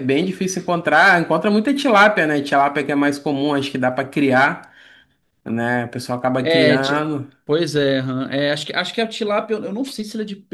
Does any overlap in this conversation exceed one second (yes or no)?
no